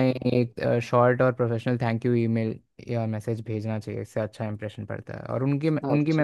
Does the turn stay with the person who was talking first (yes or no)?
yes